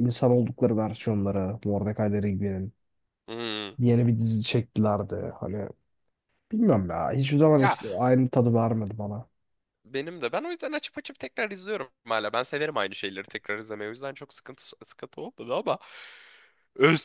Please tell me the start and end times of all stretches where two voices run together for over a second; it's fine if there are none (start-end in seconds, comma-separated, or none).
none